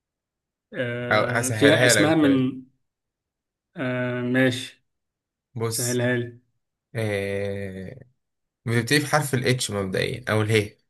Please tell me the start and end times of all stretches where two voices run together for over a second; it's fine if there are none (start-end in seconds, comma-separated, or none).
1.1-2.5